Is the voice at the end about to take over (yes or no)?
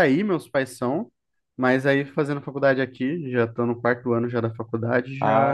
yes